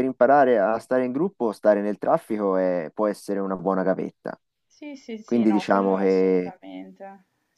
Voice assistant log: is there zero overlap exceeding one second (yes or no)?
no